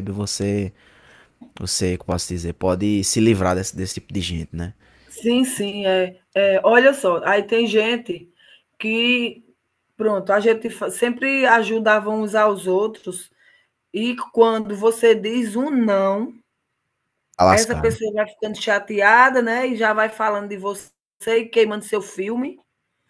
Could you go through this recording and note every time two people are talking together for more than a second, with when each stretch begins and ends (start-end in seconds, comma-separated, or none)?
none